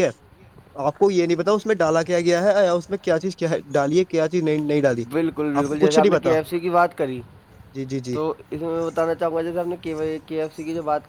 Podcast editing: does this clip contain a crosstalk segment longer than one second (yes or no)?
no